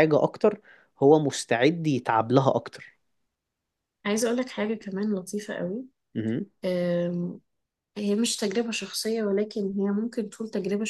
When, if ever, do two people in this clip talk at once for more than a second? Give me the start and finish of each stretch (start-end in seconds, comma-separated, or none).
none